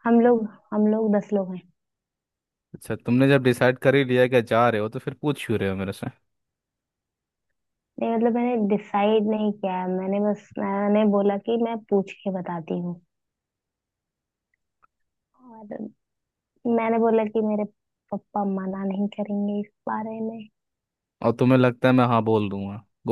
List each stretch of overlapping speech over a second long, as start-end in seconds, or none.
none